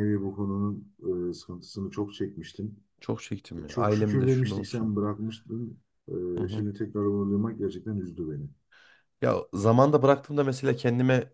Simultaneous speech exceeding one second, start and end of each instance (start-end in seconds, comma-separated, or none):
3.7-4.9